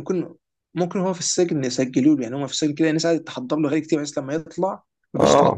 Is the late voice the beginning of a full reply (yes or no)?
no